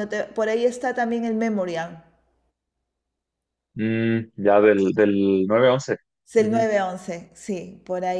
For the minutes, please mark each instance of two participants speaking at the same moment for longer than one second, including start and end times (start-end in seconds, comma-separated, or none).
none